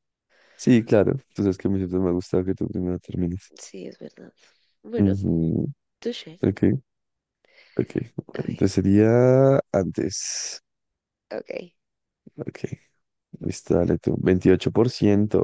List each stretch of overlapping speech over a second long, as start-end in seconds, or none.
none